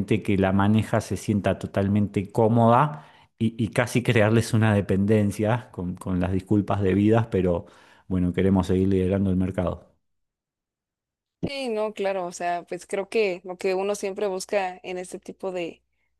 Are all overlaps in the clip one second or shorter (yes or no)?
yes